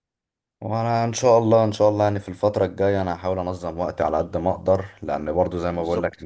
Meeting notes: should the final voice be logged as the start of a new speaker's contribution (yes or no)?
no